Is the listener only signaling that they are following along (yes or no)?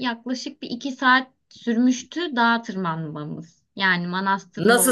no